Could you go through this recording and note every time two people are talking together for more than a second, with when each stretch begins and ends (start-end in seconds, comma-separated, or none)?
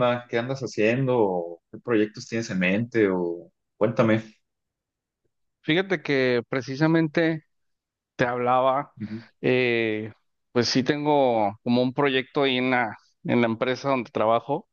none